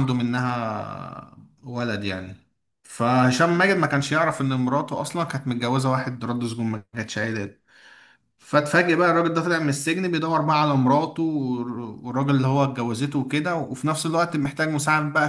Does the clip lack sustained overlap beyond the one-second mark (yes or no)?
no